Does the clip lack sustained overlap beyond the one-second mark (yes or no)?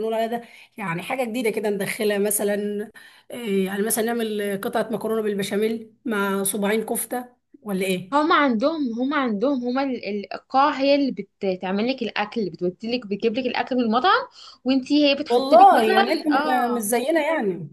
no